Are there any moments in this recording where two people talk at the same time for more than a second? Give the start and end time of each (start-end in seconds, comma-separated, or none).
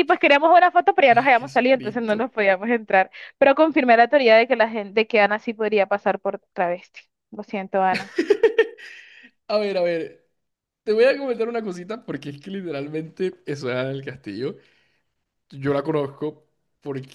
1.1-2.3